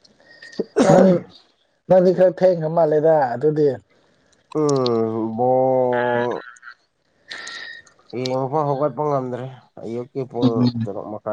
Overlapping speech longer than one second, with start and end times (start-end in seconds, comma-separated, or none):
none